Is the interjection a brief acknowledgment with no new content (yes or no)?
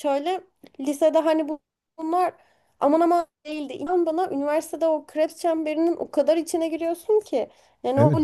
no